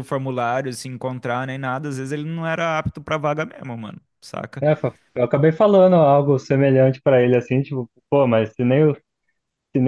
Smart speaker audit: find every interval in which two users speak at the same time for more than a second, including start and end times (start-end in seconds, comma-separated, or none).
none